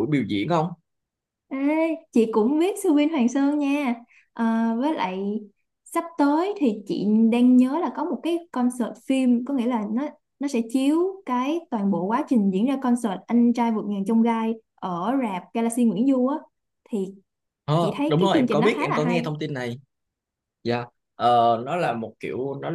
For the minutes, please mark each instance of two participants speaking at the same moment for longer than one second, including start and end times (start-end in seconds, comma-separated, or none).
17.8-19.2